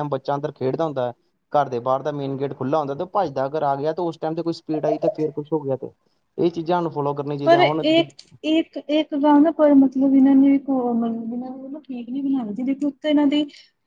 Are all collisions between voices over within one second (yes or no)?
yes